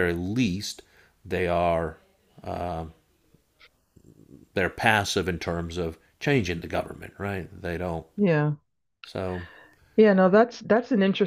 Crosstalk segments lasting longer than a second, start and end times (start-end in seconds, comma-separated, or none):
none